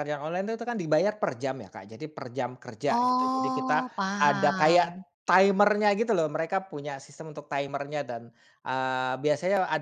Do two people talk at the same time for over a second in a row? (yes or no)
yes